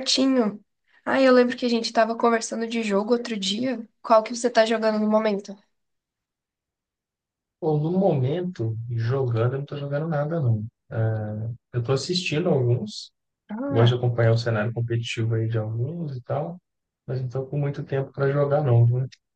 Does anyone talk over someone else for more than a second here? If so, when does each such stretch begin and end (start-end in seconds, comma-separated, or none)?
none